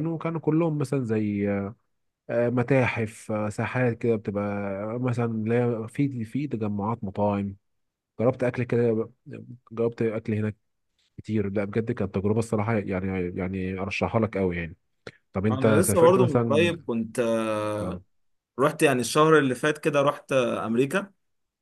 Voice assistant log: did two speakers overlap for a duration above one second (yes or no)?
yes